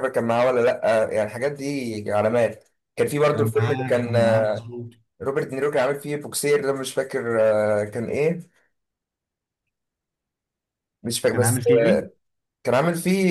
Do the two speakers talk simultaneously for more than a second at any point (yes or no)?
yes